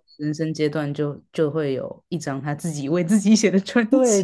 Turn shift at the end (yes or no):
yes